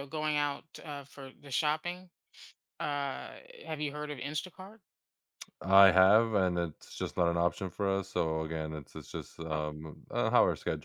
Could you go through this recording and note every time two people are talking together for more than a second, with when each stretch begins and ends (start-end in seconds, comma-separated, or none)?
none